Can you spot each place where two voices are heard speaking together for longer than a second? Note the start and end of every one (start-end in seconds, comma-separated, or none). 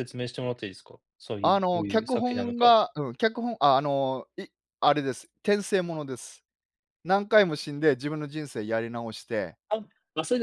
1.4-2.8